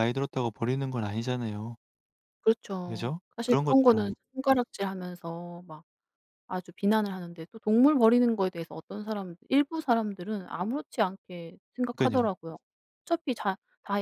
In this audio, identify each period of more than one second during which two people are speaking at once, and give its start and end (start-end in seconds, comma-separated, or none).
2.8-4.1